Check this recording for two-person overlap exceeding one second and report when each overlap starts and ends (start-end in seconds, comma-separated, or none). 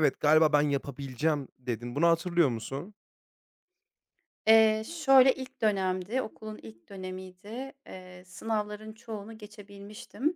none